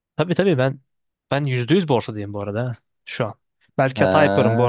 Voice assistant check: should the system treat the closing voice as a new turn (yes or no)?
no